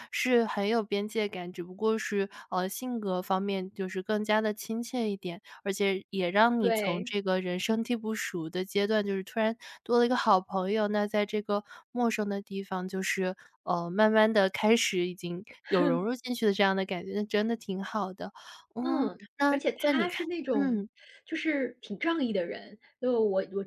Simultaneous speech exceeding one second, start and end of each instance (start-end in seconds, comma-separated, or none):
18.8-20.8